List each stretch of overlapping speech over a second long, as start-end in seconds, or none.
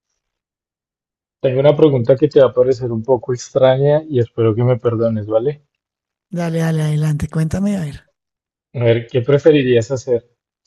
none